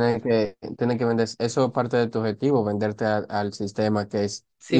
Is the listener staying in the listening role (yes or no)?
yes